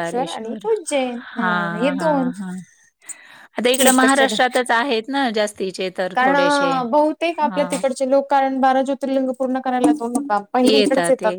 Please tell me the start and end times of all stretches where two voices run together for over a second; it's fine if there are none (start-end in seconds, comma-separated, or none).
none